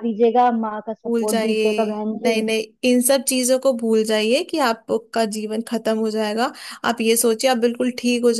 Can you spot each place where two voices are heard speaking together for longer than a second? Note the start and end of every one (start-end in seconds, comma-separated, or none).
1.1-2.4